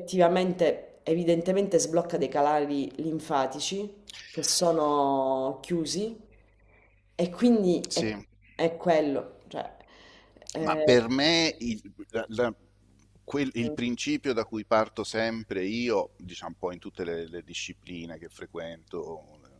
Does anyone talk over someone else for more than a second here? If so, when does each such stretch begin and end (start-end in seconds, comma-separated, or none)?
none